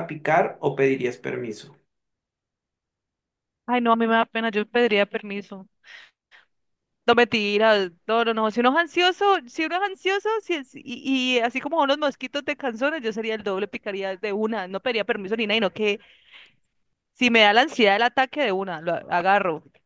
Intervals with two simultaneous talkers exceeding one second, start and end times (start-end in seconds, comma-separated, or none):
none